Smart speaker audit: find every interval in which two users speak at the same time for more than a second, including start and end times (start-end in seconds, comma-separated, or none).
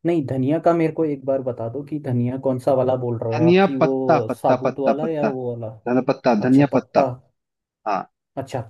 3.4-5.3